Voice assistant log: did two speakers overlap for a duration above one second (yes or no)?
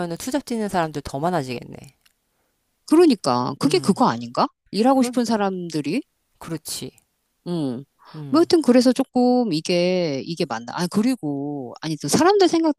no